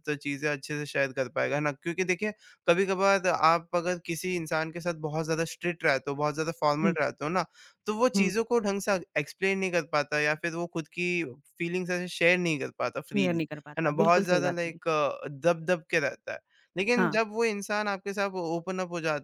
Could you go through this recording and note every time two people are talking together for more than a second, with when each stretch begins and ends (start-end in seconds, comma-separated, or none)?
13.1-14.8